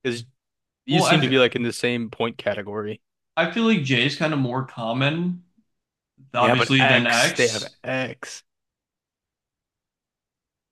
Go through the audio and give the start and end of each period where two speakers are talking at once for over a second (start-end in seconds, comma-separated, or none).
6.4-7.8